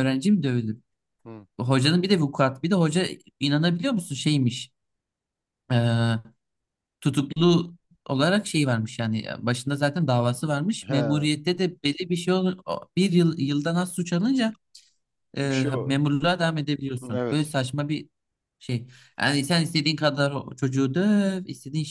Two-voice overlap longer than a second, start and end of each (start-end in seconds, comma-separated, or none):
none